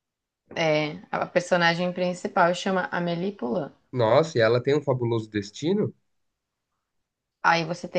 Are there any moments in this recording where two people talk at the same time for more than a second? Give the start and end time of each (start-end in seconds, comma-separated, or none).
none